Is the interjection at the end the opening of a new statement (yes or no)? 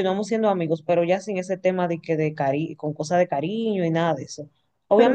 yes